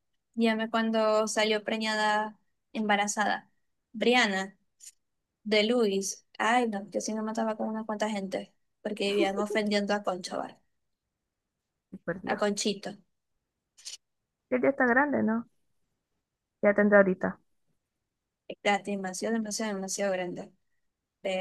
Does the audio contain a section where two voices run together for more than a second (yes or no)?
no